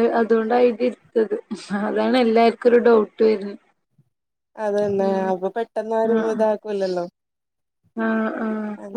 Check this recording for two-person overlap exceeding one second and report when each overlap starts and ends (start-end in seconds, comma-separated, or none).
none